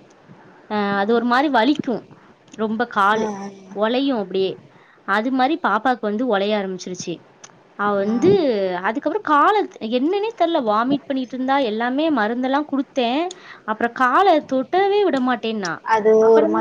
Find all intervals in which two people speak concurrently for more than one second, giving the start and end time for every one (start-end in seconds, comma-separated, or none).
none